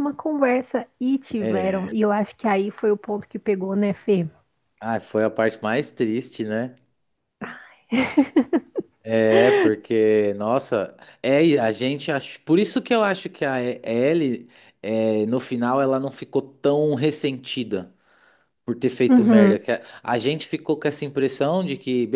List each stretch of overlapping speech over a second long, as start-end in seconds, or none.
none